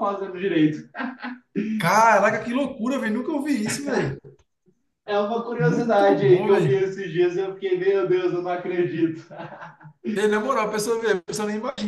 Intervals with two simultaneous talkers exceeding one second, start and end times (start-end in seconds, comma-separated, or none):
5.6-6.9